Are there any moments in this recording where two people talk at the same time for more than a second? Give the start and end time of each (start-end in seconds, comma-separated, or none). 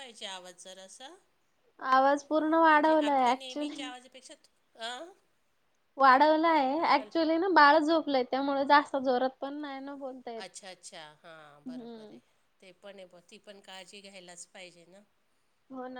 2.7-3.9